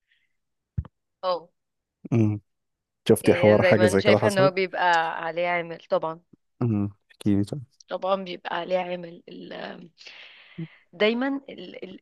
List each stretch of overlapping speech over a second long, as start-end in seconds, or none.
3.2-4.5